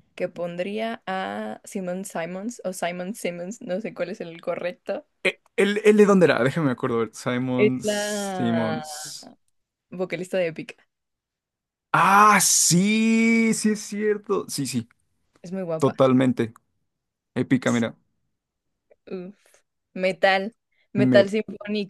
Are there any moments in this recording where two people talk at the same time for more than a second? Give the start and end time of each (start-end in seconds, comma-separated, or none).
7.5-8.8